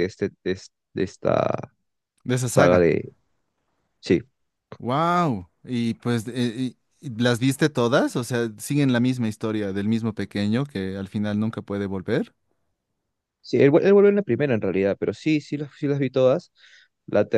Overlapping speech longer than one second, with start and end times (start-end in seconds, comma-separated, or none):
none